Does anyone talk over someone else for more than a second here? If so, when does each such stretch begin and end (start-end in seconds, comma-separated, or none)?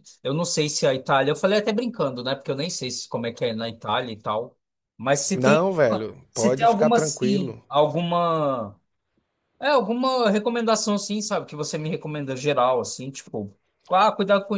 6.3-7.6